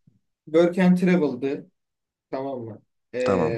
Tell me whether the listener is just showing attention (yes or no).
yes